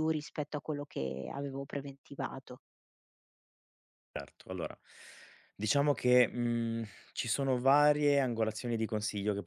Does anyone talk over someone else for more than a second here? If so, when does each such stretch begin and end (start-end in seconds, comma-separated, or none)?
none